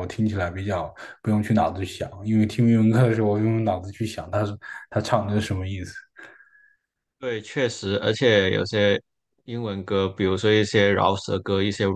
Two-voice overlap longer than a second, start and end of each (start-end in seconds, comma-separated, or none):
none